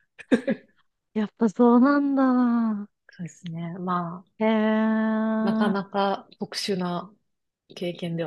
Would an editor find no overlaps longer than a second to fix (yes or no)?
yes